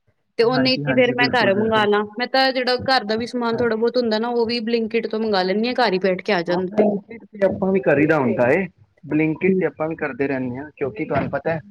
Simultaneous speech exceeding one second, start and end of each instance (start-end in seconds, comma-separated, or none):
0.6-1.9